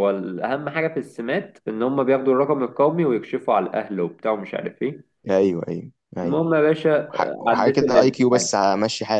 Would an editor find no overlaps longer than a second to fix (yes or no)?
no